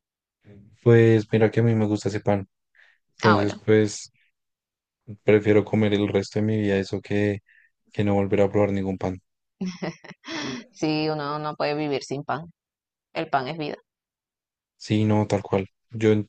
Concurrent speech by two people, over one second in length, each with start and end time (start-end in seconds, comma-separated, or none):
none